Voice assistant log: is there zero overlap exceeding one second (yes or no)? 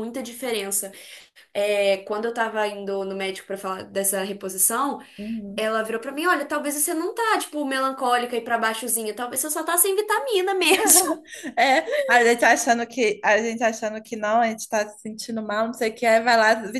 yes